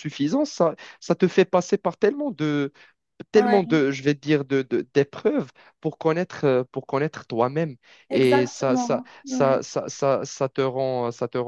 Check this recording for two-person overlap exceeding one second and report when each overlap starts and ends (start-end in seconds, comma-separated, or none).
8.1-9.6